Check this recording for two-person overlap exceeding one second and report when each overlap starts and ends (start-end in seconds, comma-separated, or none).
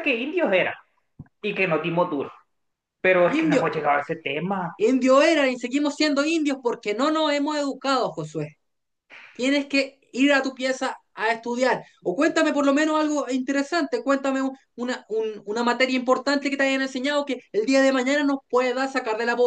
none